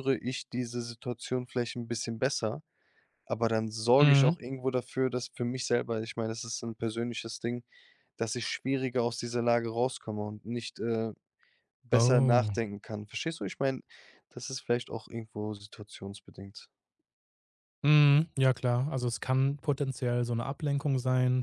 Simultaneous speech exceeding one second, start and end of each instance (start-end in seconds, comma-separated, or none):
none